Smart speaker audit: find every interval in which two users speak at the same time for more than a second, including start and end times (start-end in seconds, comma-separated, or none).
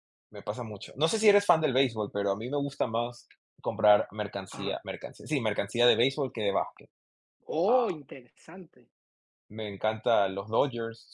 none